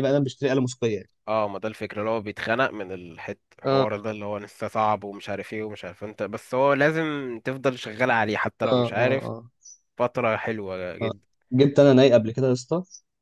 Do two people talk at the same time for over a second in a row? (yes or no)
no